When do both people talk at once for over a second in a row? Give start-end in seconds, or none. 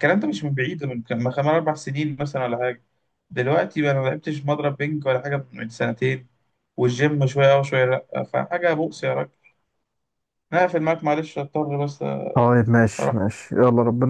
none